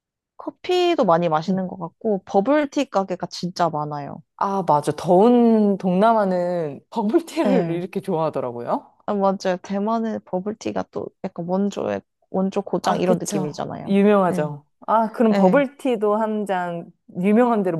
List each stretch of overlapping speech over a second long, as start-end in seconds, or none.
12.8-14.5